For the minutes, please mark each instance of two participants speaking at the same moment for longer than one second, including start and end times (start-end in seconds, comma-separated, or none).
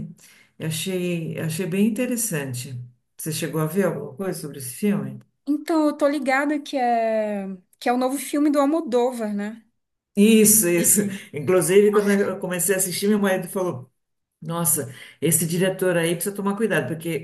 none